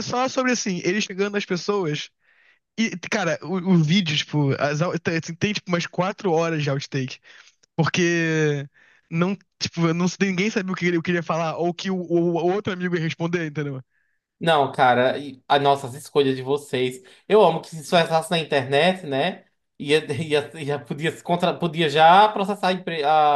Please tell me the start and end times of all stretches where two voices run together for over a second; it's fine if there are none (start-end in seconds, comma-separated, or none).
none